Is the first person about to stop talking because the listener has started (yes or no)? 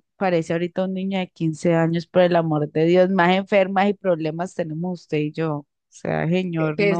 yes